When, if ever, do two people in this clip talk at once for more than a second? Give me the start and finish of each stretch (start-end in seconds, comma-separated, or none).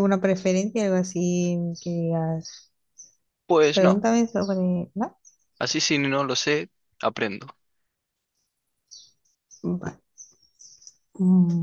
none